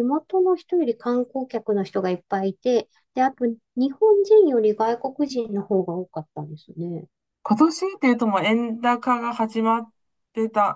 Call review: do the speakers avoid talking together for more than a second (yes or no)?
yes